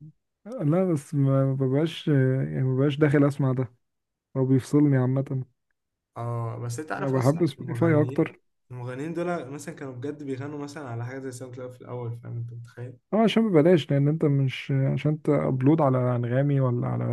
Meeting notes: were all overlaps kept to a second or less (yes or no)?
no